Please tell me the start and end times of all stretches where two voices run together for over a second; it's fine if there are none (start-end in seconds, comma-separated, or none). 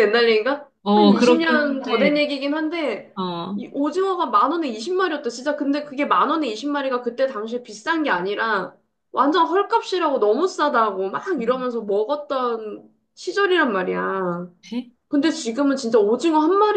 0.8-2.2